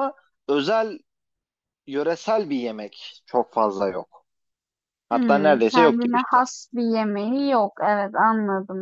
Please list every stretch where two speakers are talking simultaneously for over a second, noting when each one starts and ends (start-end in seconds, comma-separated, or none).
5.1-6.4